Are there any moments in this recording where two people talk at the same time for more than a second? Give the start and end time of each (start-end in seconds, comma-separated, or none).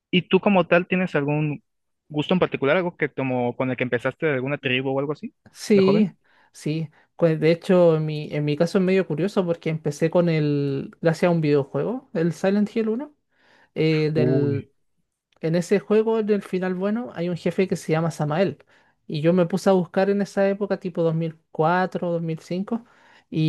none